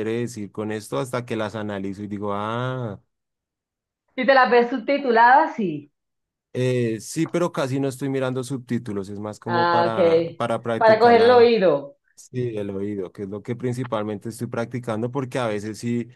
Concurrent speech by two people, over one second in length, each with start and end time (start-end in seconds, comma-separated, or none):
9.4-11.5